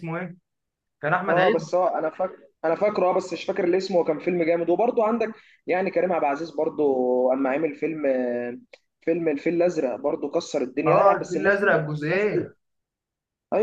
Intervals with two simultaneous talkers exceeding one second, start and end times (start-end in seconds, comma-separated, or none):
10.9-12.3